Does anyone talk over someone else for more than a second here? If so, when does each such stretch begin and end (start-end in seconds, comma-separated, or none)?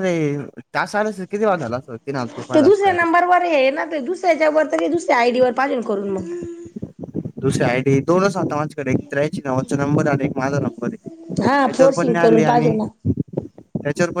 11.4-12.8